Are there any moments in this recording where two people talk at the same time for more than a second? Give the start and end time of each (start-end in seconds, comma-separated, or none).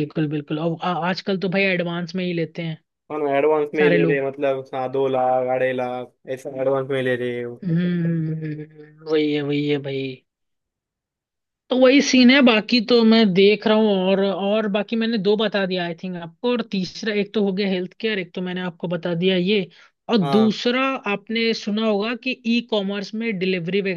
none